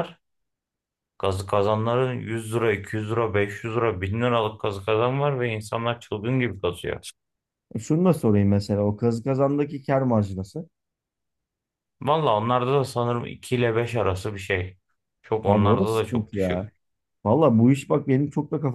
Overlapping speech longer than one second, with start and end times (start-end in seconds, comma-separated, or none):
15.4-16.7